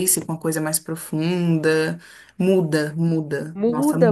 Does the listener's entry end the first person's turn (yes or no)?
yes